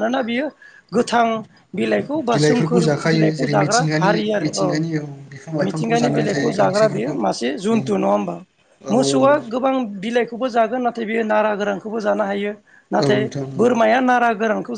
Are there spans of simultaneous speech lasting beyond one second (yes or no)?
yes